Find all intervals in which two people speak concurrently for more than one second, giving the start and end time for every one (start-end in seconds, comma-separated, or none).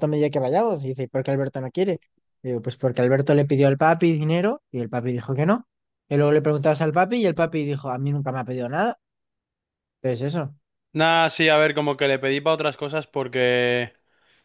none